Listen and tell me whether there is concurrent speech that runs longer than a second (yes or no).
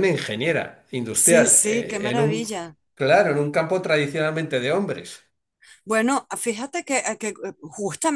yes